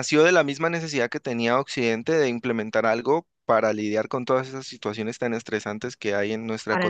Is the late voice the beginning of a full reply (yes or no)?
yes